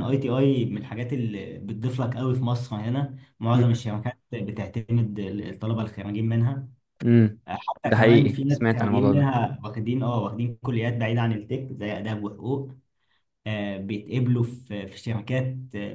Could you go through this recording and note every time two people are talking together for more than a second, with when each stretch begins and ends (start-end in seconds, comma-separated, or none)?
7.9-9.3